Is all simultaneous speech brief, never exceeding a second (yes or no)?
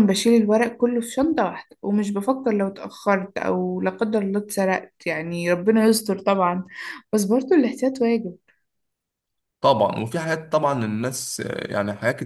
yes